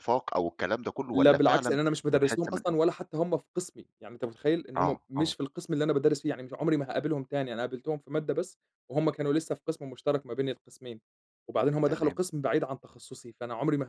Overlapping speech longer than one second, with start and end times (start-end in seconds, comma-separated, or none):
1.1-2.6